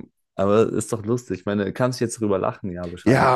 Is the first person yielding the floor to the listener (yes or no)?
yes